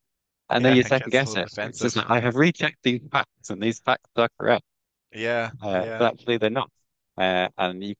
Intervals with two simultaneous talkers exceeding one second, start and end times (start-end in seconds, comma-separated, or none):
0.6-2.0